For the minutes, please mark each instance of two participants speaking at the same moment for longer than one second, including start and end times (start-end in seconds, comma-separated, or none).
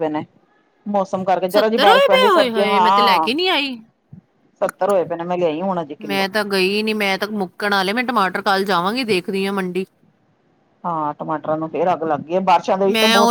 1.9-3.3